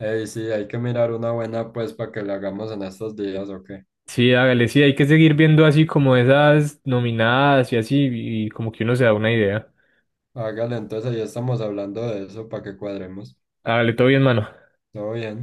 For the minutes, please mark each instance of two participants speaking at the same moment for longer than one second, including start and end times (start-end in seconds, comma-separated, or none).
none